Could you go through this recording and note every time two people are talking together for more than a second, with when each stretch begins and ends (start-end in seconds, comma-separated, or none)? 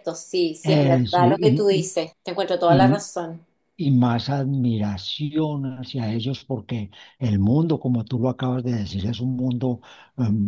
0.6-1.9